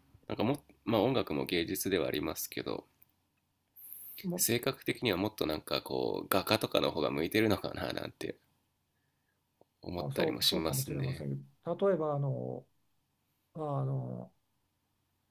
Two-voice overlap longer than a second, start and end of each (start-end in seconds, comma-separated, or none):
10.0-11.3